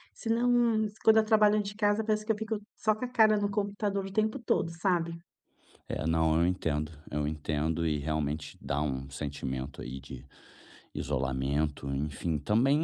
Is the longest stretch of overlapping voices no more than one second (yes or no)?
yes